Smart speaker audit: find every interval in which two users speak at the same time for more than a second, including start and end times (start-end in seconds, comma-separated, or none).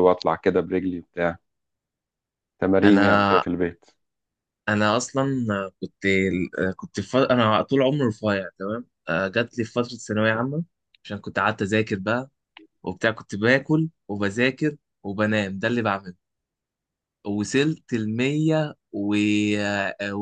none